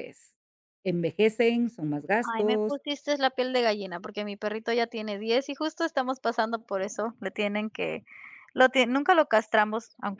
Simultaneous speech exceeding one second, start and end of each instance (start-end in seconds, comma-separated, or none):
none